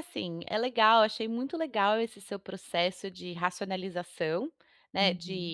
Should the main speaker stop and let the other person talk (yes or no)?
no